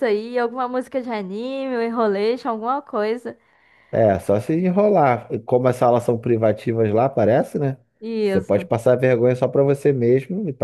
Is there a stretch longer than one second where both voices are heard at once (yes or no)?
no